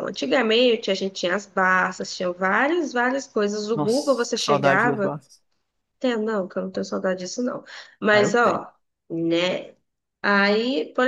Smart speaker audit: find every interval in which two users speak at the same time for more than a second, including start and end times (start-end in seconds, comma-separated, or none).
3.8-5.1